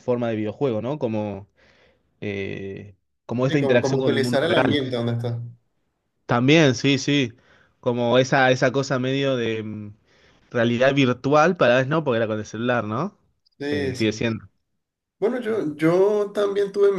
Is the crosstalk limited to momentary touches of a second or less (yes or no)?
no